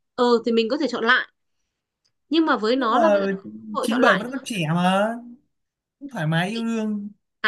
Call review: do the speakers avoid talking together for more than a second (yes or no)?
yes